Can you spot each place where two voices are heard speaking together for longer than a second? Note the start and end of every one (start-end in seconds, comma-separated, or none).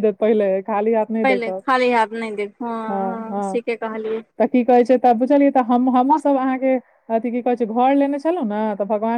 none